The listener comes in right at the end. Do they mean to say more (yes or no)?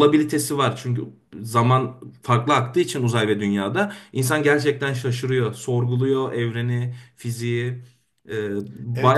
yes